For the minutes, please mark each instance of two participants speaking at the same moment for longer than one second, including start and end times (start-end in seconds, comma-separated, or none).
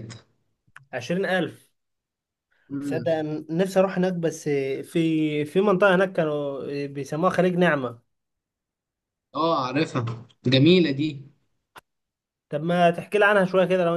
none